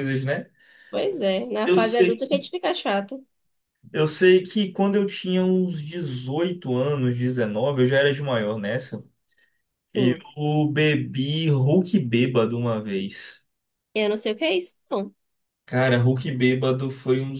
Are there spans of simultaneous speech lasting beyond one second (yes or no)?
no